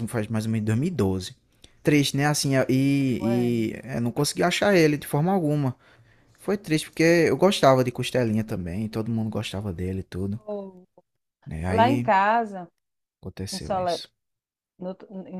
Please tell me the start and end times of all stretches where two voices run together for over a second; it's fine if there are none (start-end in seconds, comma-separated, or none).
none